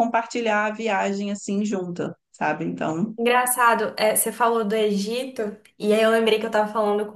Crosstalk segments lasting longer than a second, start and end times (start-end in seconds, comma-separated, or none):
none